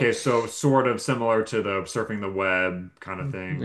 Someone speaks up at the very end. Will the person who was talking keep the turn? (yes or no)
no